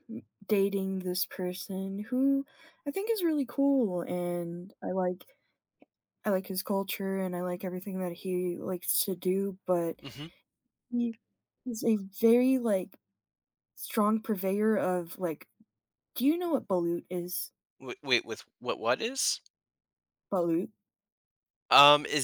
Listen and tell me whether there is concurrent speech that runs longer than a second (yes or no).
no